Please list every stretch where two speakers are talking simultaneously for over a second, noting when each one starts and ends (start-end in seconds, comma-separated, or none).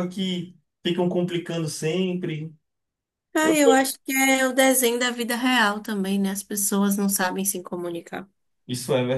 none